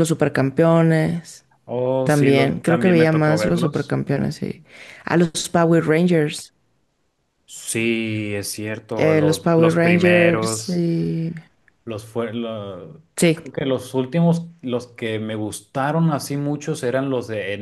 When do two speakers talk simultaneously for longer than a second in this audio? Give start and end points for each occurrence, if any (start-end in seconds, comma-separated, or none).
2.0-3.9, 9.0-10.8